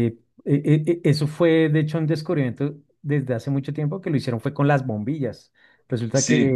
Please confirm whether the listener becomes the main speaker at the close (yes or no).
no